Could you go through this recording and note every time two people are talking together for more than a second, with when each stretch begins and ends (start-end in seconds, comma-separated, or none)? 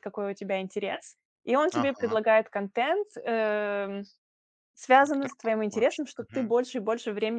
5.0-6.5